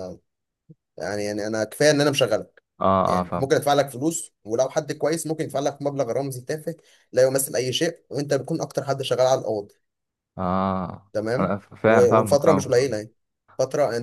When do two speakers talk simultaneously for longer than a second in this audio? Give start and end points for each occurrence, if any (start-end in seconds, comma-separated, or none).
11.1-13.0